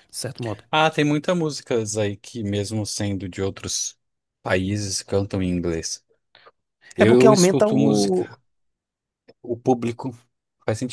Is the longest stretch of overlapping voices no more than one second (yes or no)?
no